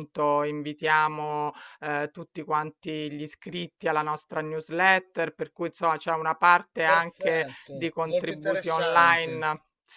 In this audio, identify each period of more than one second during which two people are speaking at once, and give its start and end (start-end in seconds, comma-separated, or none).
6.8-9.4